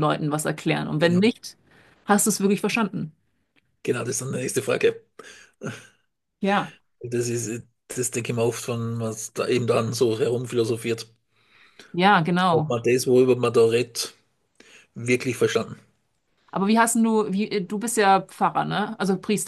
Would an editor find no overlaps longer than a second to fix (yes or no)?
yes